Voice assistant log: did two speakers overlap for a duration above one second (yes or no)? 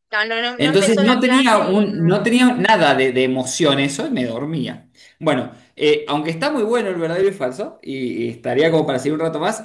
yes